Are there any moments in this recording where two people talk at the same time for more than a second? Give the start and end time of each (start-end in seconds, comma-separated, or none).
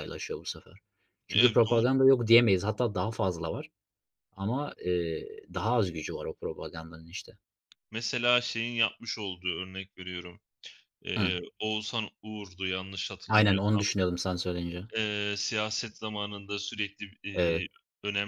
none